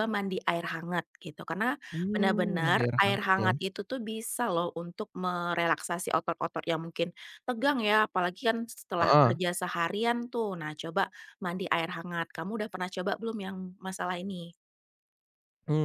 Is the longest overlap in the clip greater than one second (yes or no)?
yes